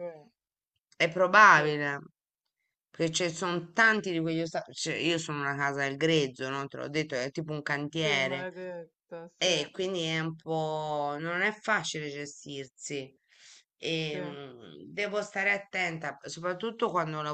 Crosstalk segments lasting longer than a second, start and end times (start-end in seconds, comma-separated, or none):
none